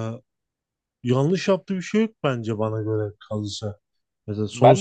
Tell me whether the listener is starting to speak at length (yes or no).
yes